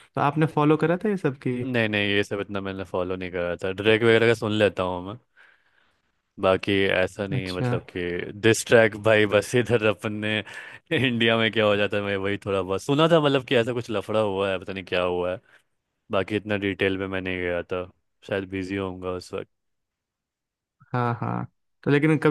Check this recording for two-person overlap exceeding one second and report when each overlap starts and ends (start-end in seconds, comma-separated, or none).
none